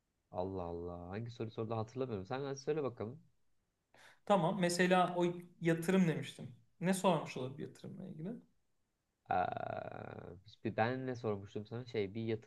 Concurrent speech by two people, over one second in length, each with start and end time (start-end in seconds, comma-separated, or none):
none